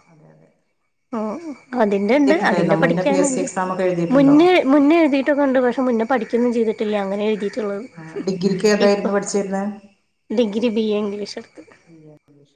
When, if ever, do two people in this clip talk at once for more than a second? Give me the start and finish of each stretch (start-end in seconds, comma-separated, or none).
1.9-3.5